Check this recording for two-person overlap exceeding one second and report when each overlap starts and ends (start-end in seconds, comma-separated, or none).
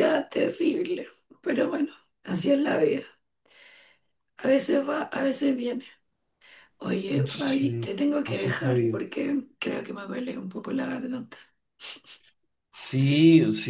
7.2-9.0